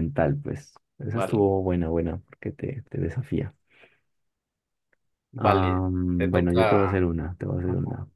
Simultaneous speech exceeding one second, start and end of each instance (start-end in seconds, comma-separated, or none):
5.4-7.0